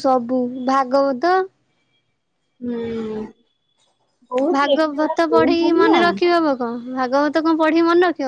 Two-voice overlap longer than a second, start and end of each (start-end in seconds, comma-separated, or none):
4.6-6.0